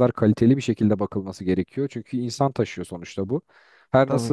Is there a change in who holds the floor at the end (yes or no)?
no